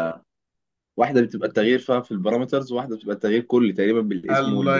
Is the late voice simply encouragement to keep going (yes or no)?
no